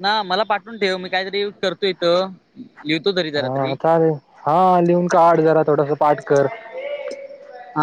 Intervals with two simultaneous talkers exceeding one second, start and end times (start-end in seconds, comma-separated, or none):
none